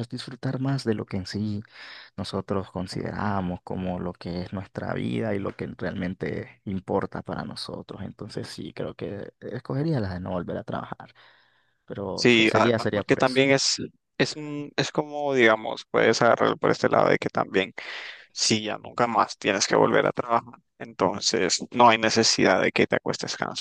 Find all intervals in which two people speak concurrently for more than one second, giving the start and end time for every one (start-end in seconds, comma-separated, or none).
12.1-13.4